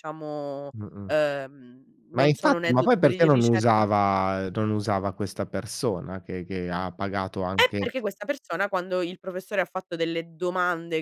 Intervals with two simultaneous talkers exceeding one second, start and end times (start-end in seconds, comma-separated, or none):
2.1-3.8